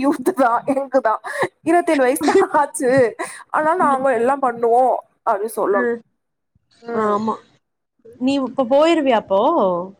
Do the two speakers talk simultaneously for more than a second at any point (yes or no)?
no